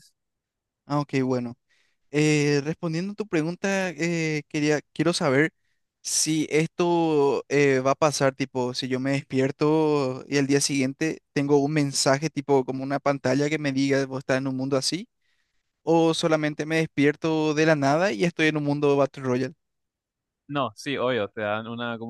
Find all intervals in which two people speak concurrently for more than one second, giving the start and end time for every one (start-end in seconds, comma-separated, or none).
none